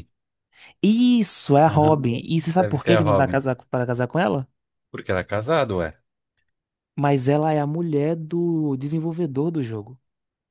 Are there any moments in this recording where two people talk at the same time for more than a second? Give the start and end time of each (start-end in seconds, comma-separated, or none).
1.7-3.4